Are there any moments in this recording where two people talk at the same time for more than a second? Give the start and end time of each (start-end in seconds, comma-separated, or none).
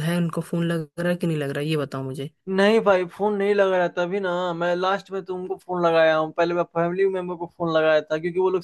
none